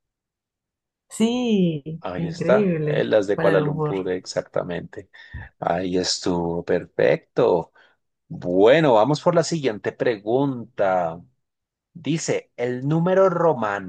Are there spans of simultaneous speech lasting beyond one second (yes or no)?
yes